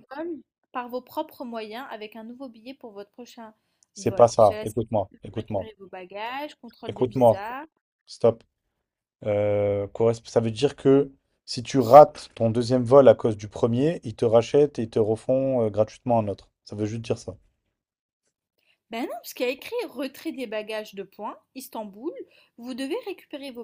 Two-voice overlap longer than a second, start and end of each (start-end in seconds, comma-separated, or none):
4.0-5.7